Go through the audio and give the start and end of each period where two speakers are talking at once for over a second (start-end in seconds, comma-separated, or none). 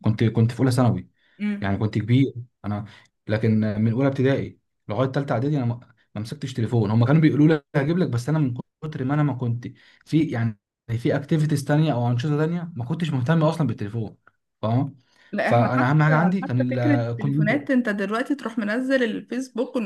15.4-17.6